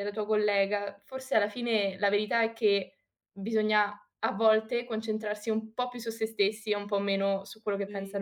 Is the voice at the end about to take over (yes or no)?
yes